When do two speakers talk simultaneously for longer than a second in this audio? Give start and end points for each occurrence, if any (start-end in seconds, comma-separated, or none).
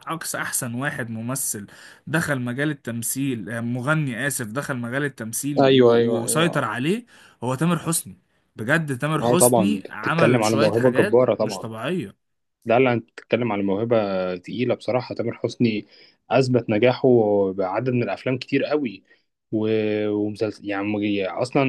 9.2-11.7